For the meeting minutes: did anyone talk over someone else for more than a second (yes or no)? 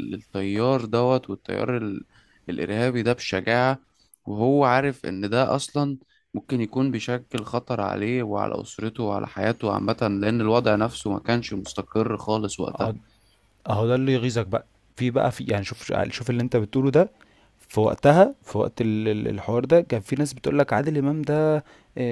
no